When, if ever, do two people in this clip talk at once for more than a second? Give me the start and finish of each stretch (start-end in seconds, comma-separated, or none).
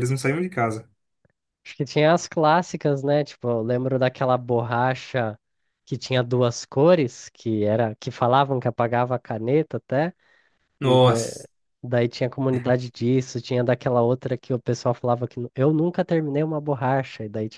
none